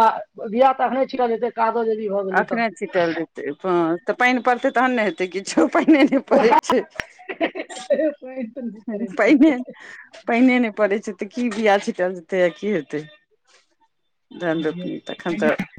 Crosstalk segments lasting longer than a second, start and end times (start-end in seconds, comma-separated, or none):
7.7-9.3